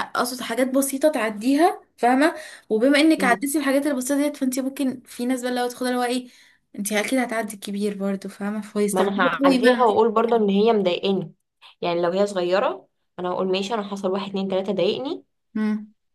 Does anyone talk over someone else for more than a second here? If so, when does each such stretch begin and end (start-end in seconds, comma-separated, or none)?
8.9-10.4